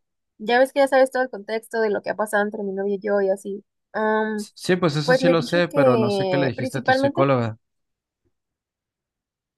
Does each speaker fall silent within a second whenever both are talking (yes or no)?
no